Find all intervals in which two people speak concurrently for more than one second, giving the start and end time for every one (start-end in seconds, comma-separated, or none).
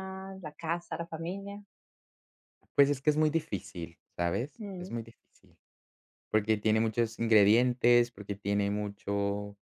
none